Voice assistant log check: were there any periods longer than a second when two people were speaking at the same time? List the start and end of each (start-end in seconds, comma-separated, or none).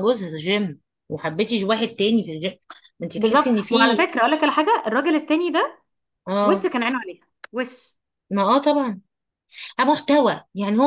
none